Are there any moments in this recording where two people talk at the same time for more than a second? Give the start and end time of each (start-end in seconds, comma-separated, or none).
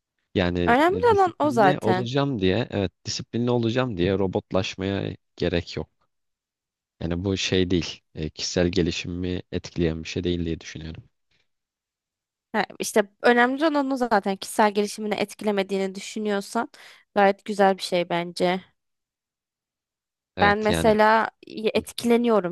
0.7-2.1